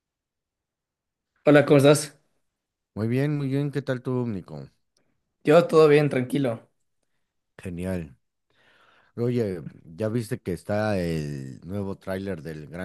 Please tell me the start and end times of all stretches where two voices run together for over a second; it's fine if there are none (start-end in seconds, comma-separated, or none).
none